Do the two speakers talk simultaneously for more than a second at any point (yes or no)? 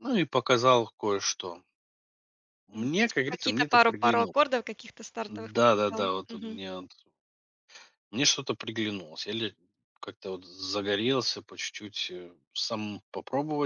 yes